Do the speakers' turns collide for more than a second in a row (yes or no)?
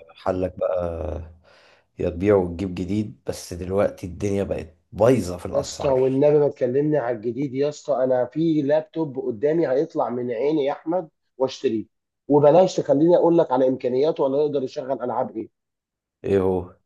no